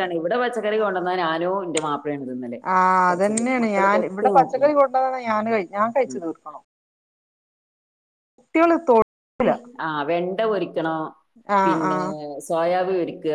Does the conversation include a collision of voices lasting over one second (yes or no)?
yes